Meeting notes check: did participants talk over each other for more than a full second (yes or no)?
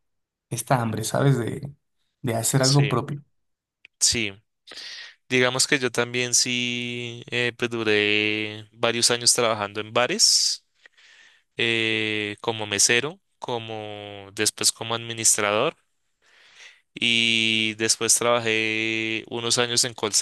no